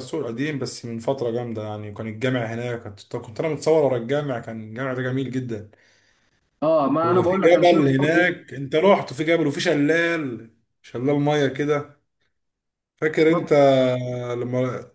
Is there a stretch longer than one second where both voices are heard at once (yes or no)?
yes